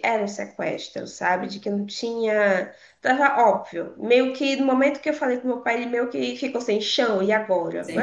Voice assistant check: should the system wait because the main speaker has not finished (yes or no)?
no